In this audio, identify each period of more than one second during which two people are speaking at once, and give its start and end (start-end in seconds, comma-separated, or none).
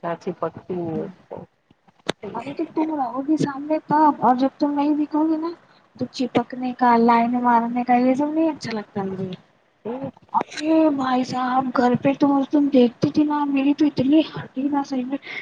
none